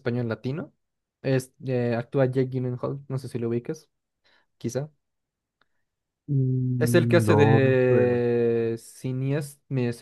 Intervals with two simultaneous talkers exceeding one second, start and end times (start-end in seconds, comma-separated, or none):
6.8-8.2